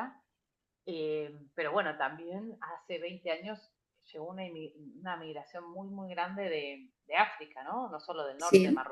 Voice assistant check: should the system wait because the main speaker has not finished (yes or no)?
yes